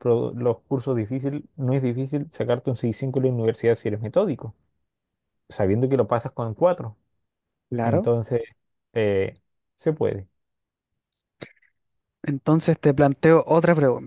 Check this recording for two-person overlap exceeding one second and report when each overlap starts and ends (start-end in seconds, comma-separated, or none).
none